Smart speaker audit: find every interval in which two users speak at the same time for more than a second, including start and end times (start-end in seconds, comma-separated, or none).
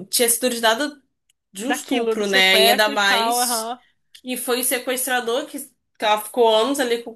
1.6-3.7